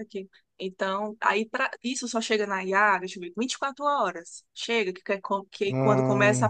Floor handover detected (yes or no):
no